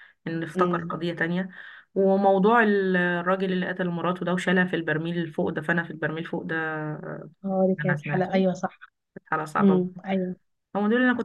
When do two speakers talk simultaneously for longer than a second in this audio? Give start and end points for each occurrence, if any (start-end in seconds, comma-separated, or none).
none